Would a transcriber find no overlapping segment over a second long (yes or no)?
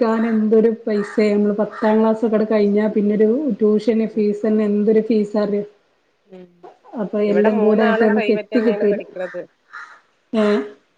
no